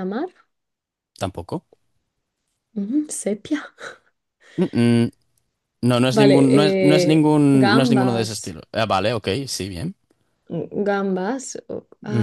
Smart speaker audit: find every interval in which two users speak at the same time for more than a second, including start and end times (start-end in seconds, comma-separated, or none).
6.1-8.6